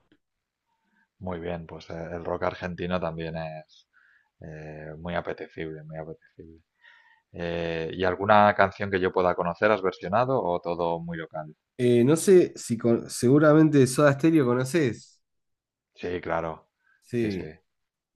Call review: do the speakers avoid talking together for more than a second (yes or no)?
yes